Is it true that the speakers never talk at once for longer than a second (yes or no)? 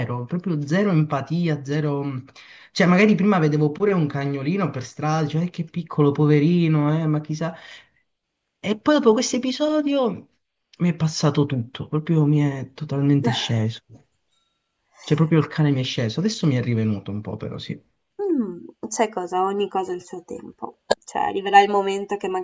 yes